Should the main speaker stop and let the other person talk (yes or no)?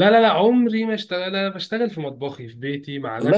no